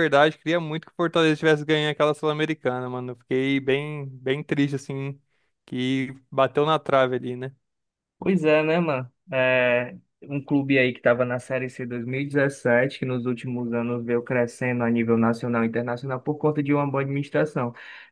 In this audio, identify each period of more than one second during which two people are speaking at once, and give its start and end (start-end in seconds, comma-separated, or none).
none